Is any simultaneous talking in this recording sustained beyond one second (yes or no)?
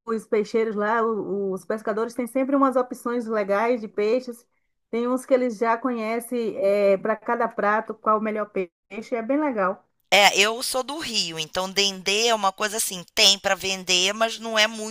no